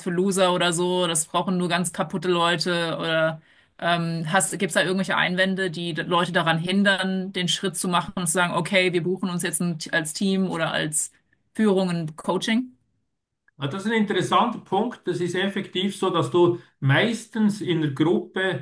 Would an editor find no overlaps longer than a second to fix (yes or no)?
yes